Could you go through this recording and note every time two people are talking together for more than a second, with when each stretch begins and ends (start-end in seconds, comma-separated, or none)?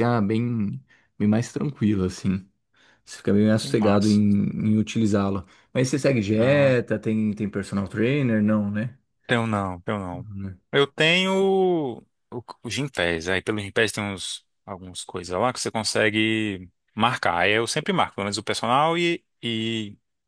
none